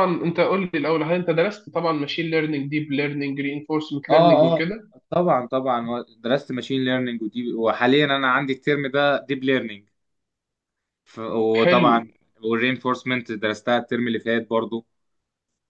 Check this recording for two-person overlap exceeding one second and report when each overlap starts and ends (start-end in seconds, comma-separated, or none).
none